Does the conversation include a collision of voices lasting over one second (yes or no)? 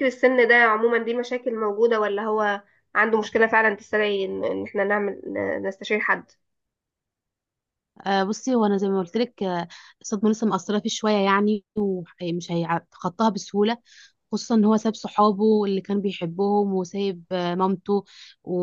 no